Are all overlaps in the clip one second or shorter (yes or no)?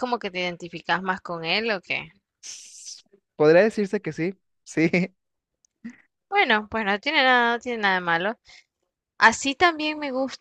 yes